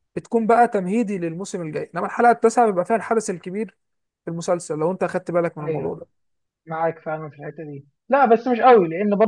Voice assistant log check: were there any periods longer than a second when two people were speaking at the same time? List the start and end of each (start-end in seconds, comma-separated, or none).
none